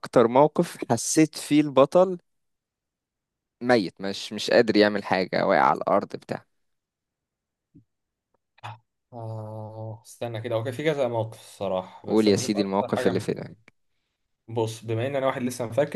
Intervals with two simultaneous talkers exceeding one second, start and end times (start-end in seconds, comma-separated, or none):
12.0-13.3